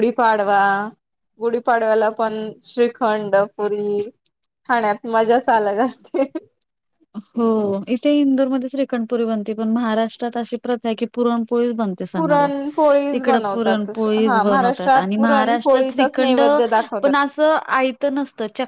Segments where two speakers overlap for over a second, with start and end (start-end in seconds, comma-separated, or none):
13.1-16.4